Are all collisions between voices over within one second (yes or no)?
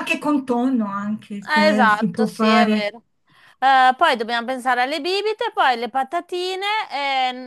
no